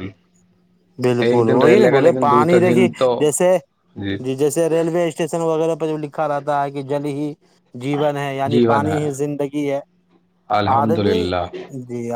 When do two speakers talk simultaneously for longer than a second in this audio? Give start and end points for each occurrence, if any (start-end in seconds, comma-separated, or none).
1.3-3.1